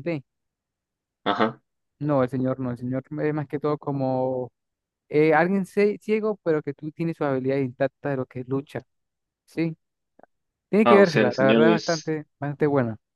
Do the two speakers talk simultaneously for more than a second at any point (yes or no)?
yes